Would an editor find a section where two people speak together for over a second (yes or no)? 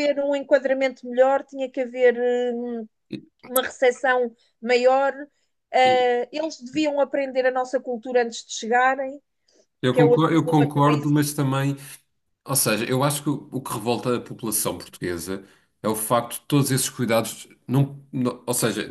yes